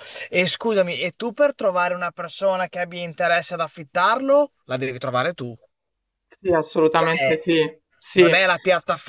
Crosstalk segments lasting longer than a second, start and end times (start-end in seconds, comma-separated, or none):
none